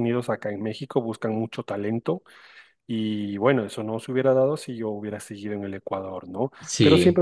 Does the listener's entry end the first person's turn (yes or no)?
no